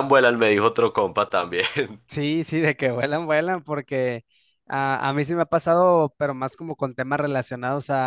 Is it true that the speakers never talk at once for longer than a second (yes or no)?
yes